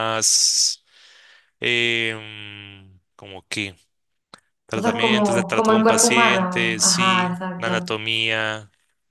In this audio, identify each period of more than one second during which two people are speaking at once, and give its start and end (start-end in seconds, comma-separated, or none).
4.7-8.0